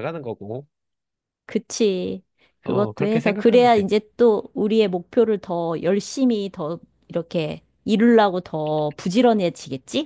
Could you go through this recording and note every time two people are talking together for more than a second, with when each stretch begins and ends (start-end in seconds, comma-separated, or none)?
2.6-3.8